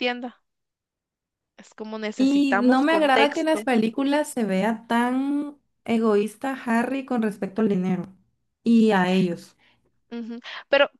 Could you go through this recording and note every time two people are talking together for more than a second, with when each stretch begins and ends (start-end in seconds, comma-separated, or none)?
2.2-3.7